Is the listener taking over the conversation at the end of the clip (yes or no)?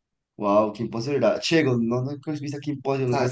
yes